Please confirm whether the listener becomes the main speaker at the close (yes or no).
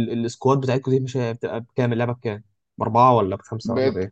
yes